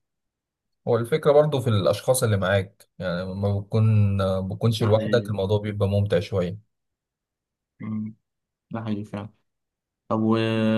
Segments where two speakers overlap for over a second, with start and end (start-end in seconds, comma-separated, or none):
none